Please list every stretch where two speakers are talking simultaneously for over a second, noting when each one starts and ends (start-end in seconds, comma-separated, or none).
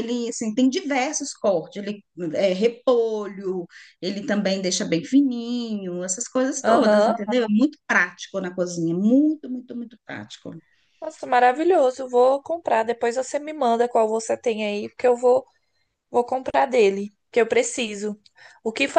none